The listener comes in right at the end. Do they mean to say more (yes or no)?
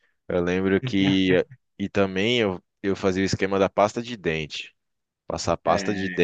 no